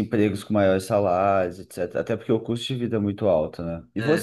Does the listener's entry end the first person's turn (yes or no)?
no